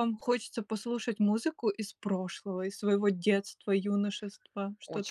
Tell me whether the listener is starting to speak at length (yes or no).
yes